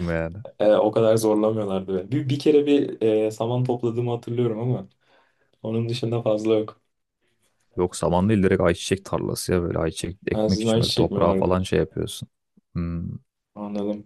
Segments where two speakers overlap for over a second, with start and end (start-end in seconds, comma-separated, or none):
10.3-11.7